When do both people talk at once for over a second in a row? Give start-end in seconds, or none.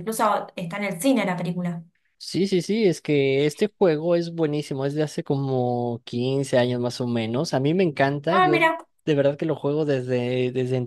none